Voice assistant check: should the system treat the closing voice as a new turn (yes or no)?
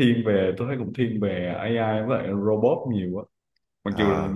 no